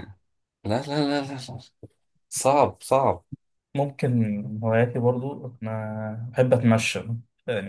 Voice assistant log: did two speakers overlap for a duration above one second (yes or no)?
no